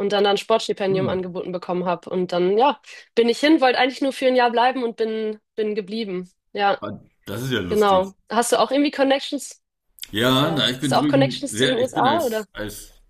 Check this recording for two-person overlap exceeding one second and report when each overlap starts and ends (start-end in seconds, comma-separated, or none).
10.4-12.5